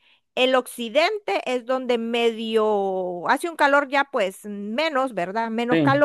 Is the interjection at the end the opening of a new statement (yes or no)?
no